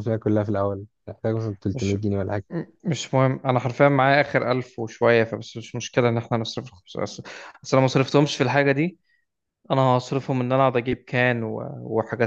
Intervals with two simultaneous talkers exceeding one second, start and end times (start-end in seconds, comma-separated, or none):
none